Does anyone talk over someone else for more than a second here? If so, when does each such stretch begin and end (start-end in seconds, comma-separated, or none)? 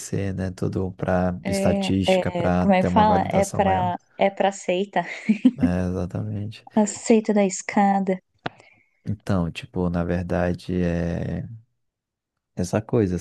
1.4-3.9